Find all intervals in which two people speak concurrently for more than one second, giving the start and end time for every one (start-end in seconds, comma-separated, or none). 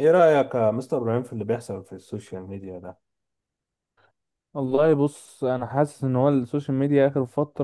none